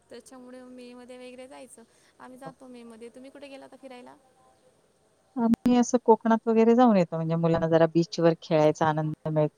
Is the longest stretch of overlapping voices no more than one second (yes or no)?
yes